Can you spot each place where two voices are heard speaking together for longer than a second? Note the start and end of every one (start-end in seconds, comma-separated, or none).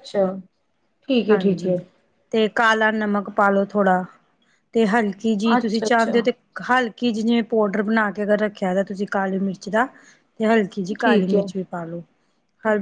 none